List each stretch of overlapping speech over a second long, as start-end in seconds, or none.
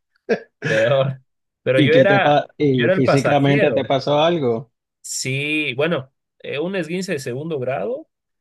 1.8-3.9